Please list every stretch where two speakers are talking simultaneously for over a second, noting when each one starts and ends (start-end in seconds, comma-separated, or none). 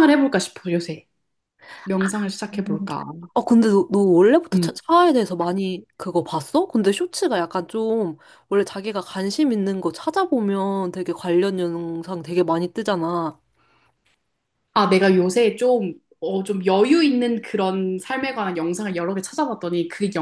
none